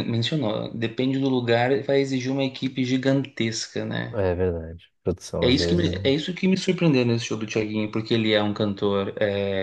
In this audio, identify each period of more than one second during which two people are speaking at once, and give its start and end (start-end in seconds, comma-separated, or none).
none